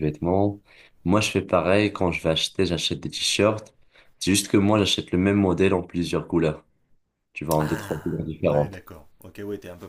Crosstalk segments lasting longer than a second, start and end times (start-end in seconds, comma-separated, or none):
7.6-8.8